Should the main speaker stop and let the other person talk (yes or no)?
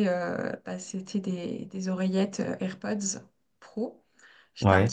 no